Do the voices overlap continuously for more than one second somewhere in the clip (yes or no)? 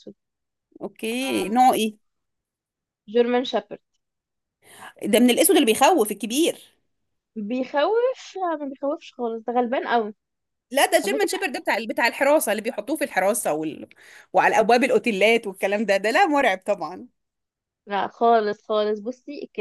no